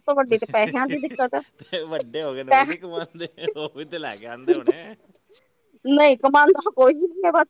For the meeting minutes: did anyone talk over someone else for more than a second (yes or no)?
no